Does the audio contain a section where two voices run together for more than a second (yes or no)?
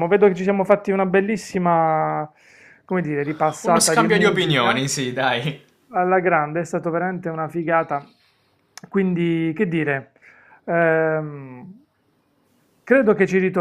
yes